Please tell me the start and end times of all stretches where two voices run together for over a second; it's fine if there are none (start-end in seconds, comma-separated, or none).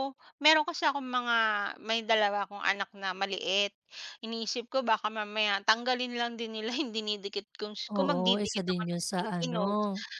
7.9-9.6